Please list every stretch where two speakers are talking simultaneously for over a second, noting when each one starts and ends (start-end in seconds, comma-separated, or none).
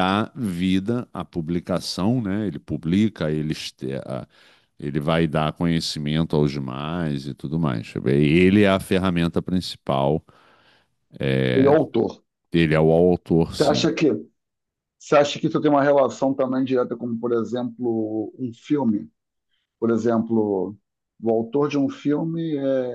none